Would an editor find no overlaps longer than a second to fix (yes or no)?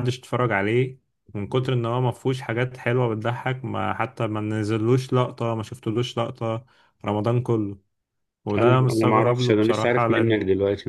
no